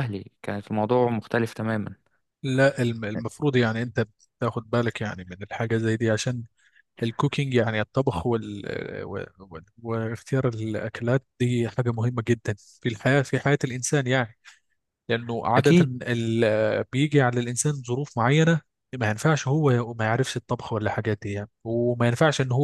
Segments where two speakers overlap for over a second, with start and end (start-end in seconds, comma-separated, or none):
none